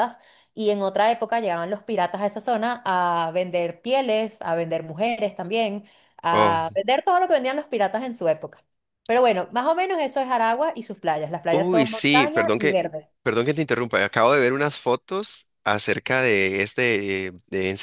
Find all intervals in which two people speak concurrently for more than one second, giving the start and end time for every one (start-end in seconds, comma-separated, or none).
11.5-12.8